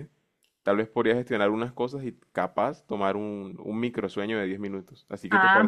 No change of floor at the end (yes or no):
no